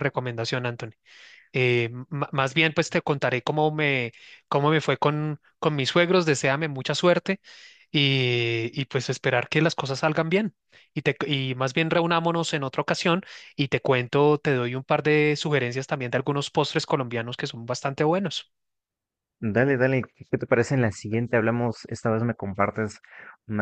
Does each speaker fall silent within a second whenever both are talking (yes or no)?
yes